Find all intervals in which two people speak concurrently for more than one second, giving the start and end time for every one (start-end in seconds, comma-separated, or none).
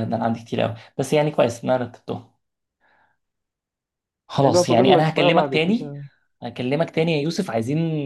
4.4-5.9